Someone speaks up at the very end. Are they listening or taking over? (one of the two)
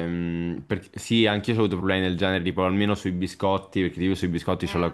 listening